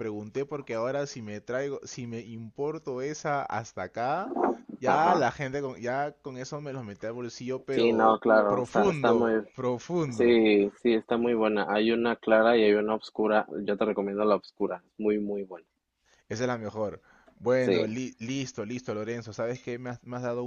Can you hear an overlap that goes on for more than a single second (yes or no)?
yes